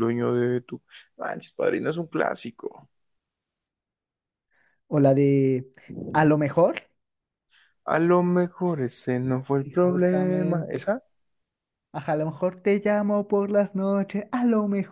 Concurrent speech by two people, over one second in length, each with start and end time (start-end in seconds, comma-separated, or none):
9.7-10.9